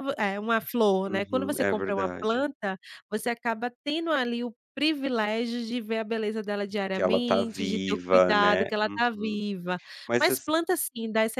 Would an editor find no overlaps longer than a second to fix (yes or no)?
no